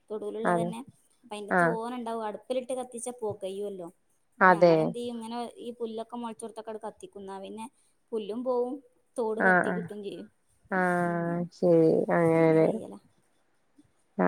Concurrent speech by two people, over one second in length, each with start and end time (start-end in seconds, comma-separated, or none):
none